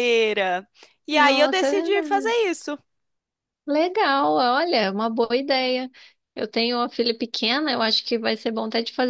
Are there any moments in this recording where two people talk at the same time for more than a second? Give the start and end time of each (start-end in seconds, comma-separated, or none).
1.1-2.3